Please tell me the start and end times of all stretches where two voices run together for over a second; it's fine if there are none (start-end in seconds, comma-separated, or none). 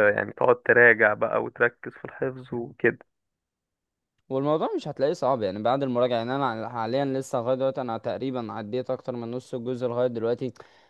none